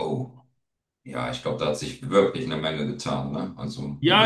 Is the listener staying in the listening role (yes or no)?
no